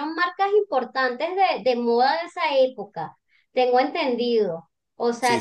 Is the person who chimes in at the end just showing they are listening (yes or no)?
yes